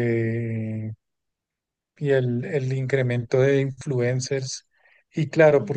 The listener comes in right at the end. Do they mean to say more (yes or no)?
no